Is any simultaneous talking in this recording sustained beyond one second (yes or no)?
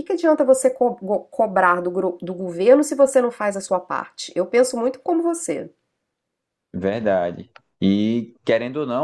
no